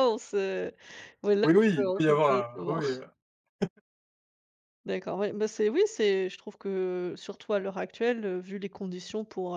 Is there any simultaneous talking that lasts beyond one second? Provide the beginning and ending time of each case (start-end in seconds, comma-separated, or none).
1.4-2.9